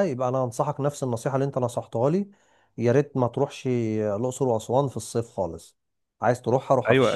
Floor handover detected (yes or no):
yes